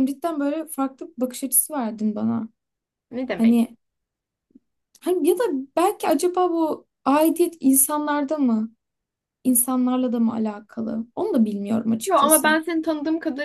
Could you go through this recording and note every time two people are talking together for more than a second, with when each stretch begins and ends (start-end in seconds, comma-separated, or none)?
none